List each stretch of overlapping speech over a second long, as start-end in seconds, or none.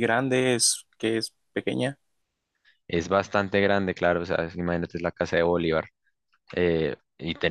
none